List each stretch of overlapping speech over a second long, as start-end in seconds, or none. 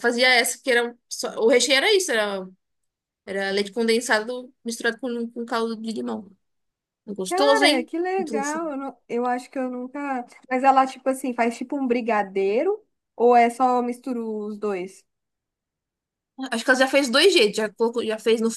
7.3-8.6